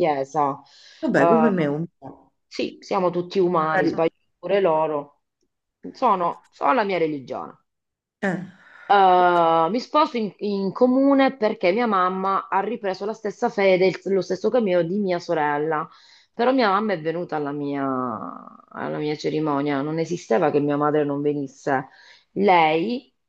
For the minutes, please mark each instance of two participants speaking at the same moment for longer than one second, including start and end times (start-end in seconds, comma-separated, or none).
none